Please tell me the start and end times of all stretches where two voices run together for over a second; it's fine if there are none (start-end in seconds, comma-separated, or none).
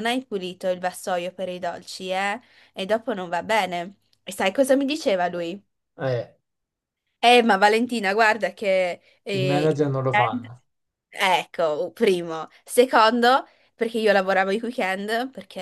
none